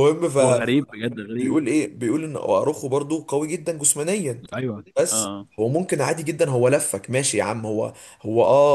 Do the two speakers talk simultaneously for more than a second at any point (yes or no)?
no